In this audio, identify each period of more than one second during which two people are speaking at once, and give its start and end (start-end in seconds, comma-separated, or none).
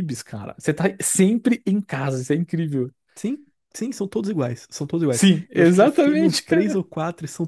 5.1-6.4